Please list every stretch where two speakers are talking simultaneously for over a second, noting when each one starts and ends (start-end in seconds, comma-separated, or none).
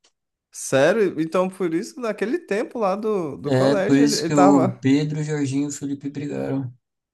3.5-4.8